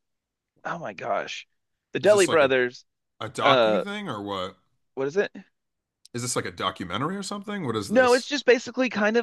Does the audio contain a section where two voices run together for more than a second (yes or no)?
no